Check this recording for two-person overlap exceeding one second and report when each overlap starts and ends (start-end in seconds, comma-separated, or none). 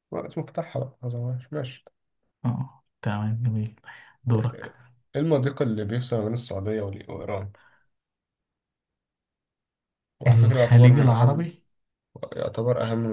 10.3-11.5